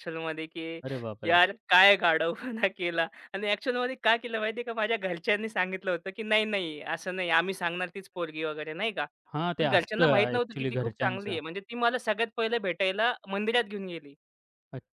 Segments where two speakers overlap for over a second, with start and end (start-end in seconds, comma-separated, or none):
9.6-11.4